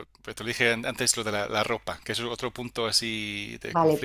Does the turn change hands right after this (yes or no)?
yes